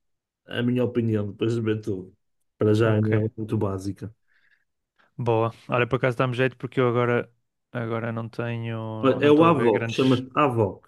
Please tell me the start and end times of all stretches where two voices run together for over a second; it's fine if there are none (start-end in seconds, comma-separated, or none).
9.0-10.2